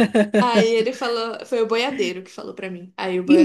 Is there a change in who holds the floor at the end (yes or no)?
yes